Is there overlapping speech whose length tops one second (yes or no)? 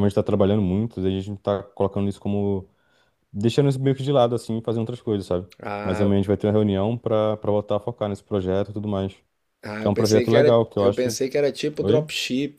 yes